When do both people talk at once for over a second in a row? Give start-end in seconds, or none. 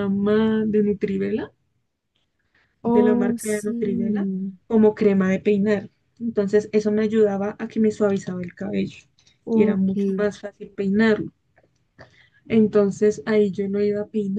2.8-4.3